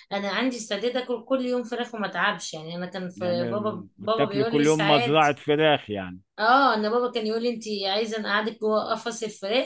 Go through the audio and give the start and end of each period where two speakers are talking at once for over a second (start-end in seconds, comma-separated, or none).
3.2-5.3